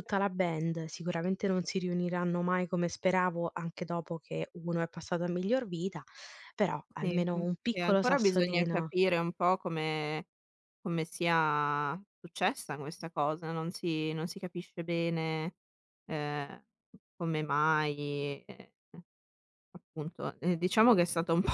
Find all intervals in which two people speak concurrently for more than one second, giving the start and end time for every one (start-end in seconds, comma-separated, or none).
7.0-8.9